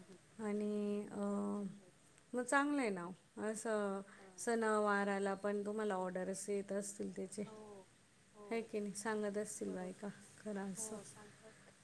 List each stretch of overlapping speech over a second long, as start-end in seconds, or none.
1.1-2.9